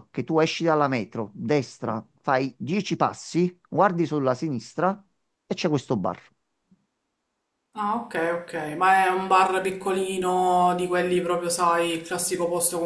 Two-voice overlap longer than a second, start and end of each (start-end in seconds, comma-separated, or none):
none